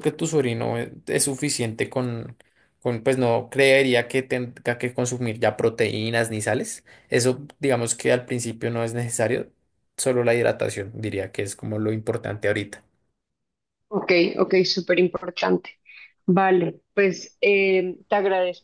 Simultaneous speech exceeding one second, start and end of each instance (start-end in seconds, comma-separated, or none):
none